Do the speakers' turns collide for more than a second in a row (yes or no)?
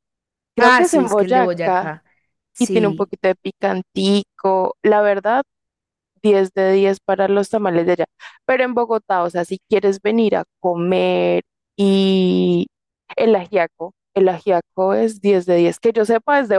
yes